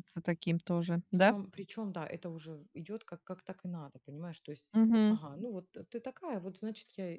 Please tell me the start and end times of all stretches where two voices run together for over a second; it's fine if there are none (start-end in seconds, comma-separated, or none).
none